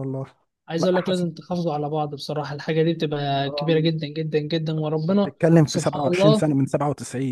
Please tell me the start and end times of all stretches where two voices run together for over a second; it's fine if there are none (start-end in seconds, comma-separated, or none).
4.9-6.5